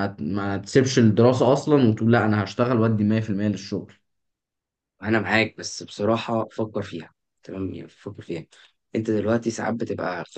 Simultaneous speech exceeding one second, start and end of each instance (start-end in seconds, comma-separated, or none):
none